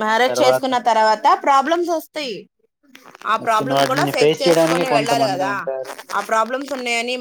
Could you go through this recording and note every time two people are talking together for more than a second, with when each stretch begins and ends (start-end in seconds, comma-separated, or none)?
3.4-5.5